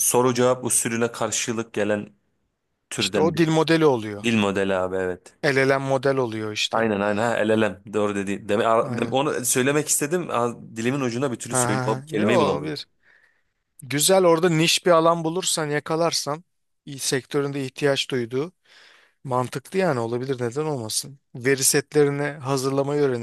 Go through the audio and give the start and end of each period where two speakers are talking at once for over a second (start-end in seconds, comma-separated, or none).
11.5-12.8